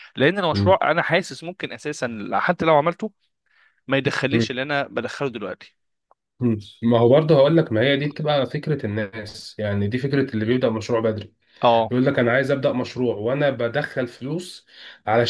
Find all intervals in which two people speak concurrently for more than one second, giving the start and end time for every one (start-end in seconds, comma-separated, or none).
none